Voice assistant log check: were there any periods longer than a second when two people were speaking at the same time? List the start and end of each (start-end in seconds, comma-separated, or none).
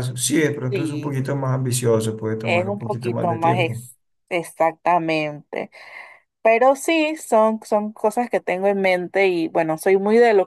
2.4-3.9